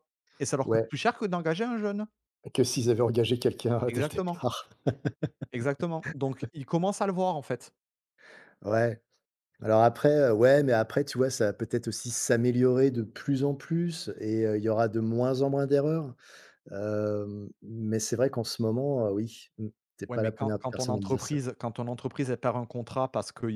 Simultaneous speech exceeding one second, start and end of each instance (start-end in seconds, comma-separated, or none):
20.1-21.4